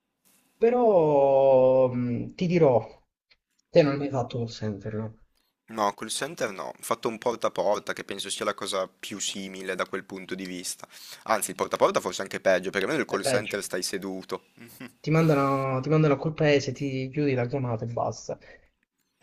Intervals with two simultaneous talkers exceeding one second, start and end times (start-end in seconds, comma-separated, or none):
none